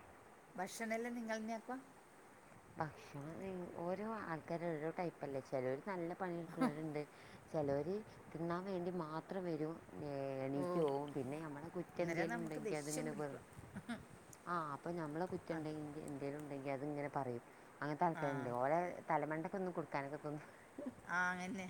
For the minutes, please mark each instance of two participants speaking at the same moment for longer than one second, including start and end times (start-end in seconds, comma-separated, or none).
12.0-13.4